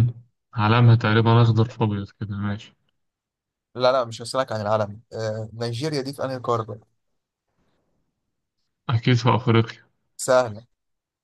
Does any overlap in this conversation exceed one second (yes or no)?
no